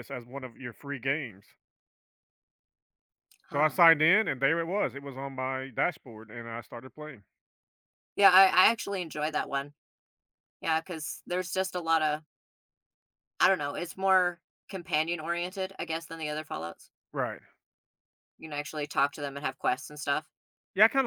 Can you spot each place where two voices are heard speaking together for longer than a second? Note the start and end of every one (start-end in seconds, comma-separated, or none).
none